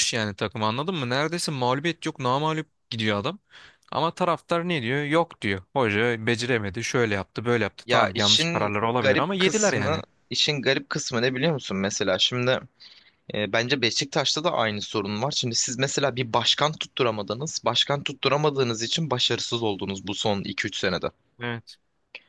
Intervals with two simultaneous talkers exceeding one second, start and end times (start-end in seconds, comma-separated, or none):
7.8-10.0